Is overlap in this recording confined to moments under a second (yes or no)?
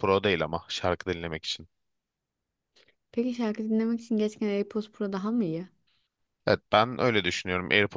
yes